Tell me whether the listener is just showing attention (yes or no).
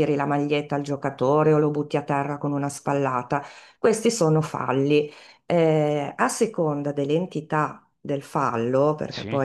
yes